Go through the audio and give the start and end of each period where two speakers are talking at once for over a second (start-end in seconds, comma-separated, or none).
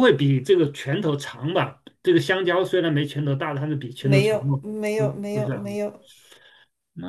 4.0-5.6